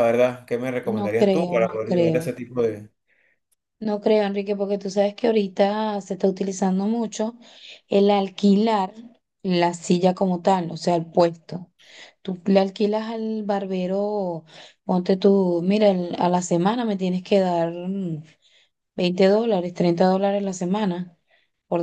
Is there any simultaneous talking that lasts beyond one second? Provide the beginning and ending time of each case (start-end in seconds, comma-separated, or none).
0.9-2.3